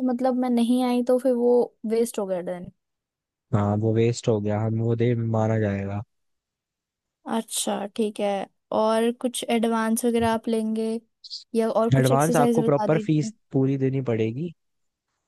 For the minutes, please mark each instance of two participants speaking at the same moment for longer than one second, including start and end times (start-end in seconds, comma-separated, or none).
12.0-13.3